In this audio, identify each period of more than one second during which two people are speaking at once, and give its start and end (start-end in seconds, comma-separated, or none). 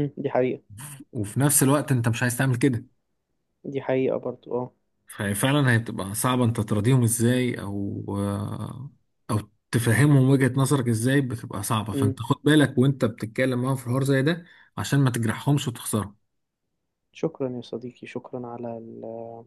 none